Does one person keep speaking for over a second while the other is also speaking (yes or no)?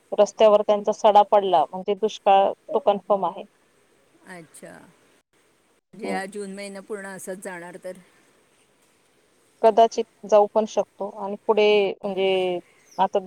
no